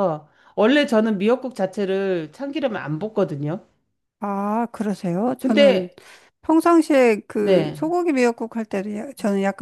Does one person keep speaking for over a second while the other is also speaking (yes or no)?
no